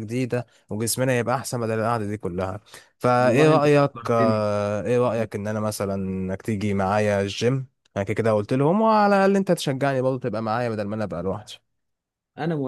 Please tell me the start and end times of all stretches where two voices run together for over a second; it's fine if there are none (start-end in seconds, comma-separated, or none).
3.2-4.5